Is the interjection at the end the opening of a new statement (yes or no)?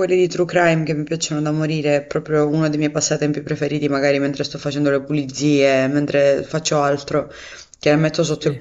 no